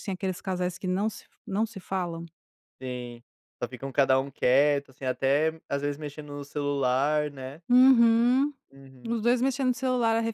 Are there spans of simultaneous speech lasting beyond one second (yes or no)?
no